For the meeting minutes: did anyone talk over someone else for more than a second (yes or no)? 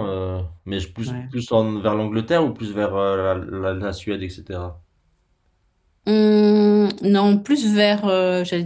no